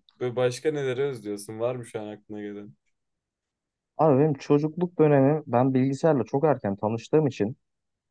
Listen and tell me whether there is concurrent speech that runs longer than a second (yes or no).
no